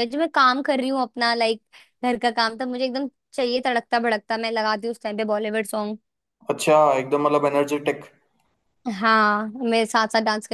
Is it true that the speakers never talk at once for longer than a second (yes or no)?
yes